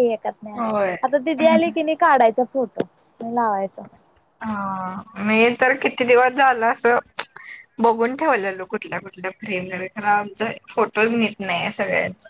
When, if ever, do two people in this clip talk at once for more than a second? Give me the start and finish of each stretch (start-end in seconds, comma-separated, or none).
none